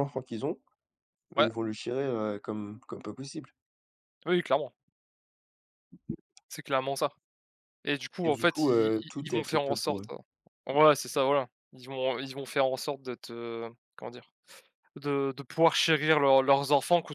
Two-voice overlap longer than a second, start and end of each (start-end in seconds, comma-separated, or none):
8.2-10.1